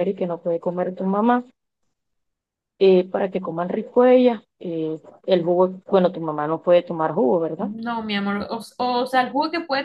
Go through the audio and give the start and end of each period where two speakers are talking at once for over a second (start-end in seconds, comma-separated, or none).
none